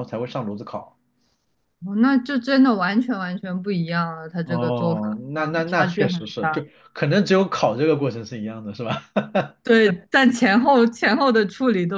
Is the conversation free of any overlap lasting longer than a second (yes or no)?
no